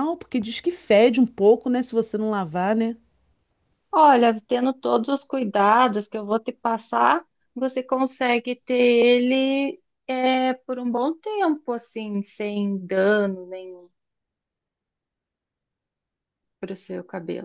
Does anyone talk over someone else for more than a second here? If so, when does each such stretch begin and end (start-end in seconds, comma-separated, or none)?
none